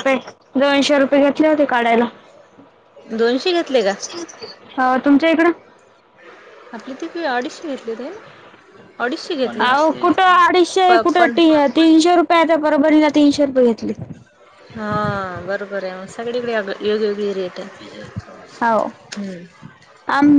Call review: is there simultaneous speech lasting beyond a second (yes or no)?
no